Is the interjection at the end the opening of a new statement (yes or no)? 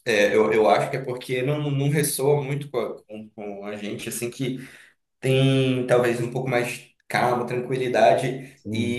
no